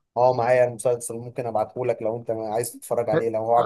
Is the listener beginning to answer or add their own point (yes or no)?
yes